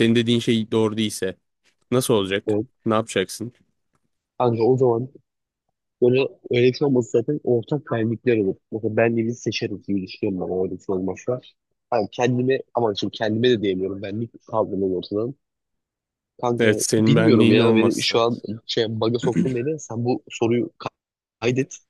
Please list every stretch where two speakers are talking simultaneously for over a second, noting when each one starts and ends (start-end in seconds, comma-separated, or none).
16.6-18.2